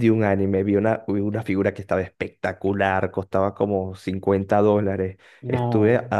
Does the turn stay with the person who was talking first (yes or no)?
yes